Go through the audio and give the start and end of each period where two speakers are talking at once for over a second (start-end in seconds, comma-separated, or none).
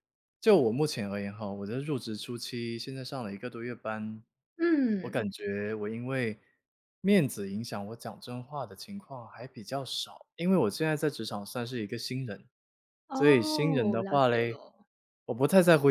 13.1-14.6